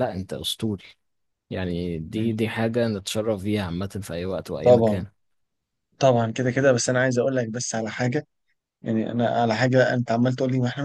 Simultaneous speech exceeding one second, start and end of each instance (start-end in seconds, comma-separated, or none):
none